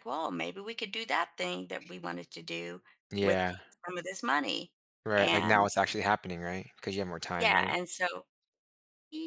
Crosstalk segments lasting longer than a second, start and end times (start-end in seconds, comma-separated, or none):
none